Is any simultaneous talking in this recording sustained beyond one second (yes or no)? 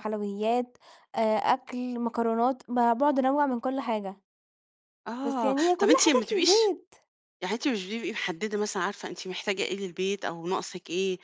yes